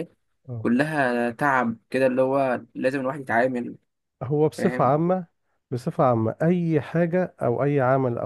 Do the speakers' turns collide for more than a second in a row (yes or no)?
no